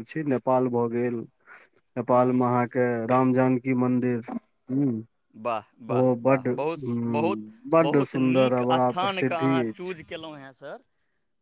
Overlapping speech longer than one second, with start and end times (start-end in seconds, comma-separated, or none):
7.9-9.9